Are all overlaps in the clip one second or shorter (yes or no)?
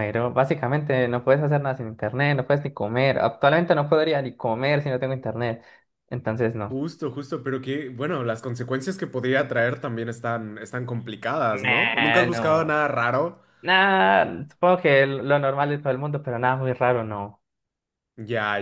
no